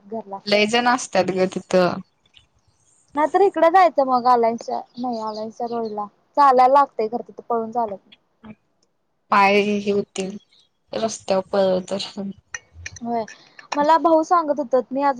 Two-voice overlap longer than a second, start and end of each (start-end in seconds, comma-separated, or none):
none